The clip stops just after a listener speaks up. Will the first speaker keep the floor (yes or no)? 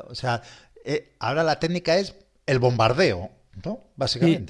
no